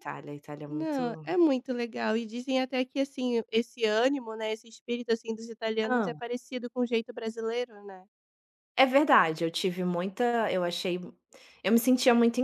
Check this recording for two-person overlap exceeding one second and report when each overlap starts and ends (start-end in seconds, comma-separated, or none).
none